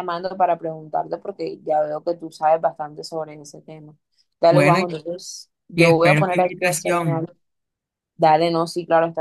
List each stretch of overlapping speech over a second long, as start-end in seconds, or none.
5.8-7.3